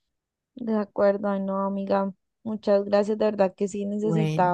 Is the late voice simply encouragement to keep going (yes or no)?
yes